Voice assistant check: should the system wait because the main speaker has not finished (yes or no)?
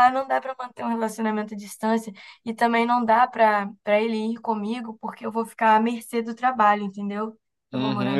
no